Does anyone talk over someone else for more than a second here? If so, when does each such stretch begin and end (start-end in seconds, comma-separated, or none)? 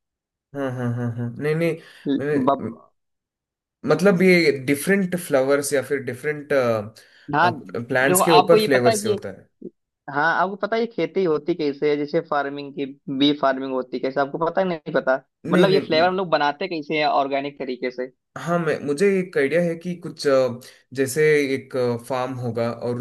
7.9-9.2